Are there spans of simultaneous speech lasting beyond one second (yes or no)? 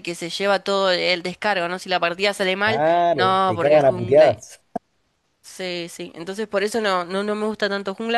yes